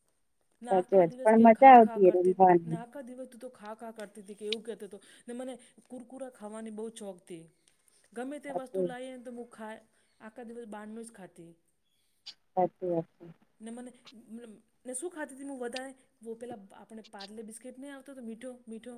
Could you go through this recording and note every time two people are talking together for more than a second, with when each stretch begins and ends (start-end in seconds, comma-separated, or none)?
0.7-2.8